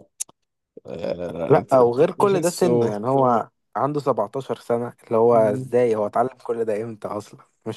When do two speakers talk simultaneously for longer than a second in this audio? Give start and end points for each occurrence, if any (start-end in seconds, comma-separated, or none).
1.5-2.9